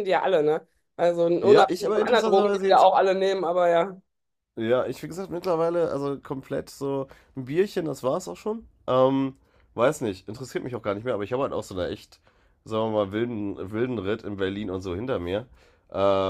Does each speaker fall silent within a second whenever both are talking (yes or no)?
no